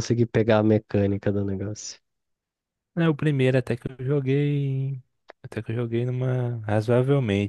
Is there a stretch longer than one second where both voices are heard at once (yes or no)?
no